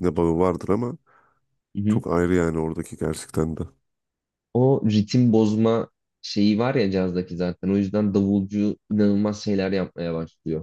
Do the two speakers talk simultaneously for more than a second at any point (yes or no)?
no